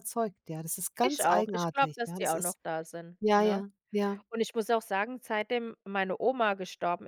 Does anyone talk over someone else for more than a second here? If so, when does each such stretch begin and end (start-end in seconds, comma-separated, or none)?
1.0-2.6